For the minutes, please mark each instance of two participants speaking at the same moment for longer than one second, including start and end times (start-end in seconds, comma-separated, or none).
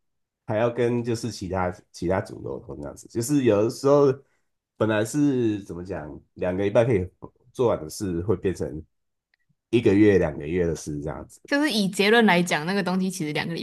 none